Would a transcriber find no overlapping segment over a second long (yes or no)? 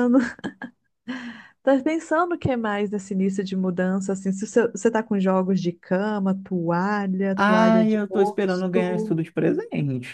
no